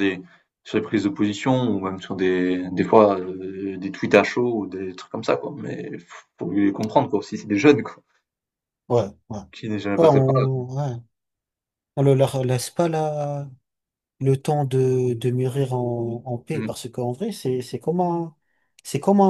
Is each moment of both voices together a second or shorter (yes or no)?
yes